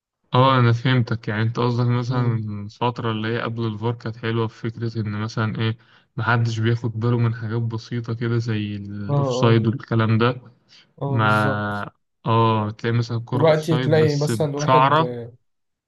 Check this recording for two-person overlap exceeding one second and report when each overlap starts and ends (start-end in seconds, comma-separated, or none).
13.3-15.2